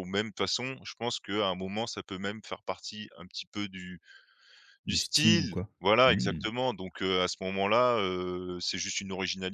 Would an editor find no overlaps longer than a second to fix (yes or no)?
no